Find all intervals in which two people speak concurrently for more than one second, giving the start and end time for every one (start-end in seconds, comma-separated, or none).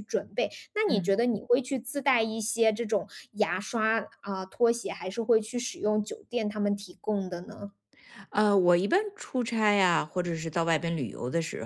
none